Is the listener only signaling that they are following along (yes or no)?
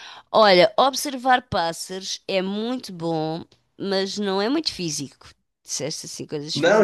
no